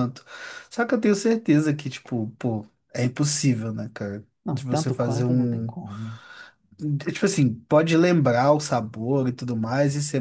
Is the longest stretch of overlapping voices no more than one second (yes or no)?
no